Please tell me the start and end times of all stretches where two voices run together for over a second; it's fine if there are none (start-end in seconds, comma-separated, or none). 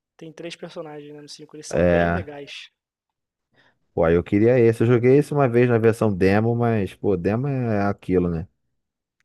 none